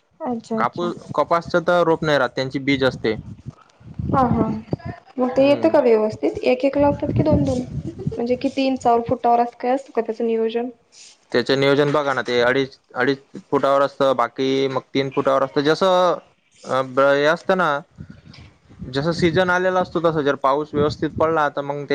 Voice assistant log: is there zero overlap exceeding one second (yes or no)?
yes